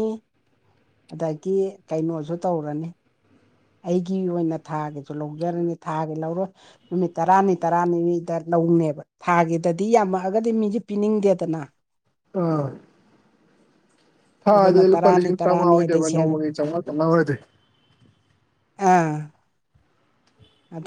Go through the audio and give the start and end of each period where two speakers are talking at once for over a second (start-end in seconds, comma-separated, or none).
14.5-16.3